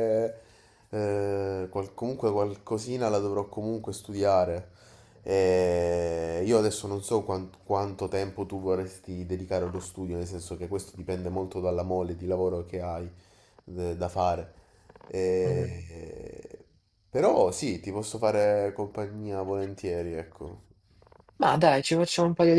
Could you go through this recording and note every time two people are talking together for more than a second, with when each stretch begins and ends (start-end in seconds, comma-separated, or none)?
none